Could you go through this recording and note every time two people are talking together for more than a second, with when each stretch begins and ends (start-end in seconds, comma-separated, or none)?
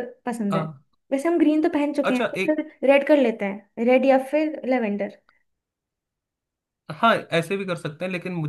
none